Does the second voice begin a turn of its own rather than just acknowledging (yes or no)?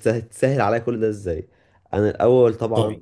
no